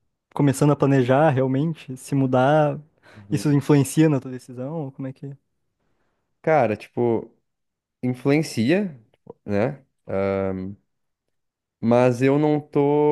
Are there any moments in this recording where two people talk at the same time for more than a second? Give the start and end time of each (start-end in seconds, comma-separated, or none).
none